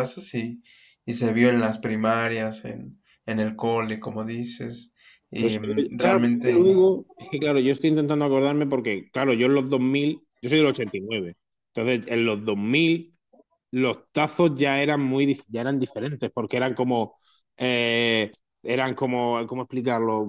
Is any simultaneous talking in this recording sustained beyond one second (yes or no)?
yes